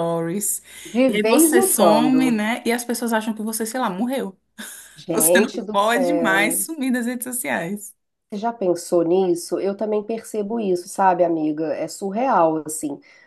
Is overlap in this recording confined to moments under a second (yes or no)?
no